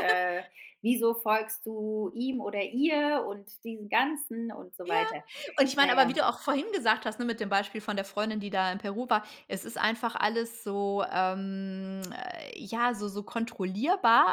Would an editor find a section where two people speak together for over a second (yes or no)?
no